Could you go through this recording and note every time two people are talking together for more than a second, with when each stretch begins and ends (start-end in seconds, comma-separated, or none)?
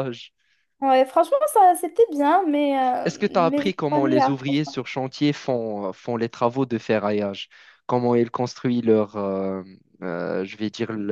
3.0-4.8